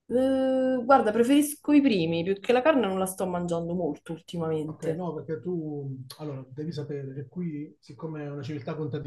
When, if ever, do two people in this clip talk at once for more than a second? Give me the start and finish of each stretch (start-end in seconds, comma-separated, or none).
none